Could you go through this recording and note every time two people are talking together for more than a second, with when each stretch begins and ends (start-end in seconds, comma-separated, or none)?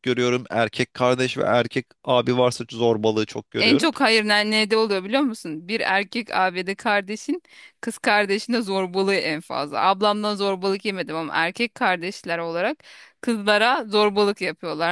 none